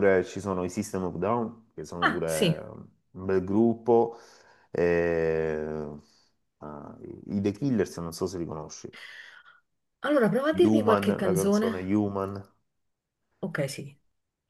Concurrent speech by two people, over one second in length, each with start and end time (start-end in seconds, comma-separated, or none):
10.6-12.0